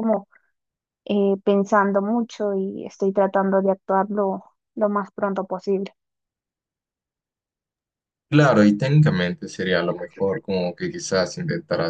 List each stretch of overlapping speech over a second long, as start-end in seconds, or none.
none